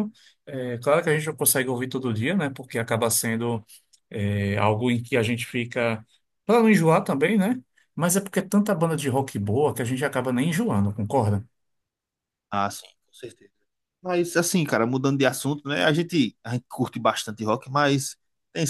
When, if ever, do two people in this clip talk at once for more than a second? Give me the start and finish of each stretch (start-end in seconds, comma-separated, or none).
none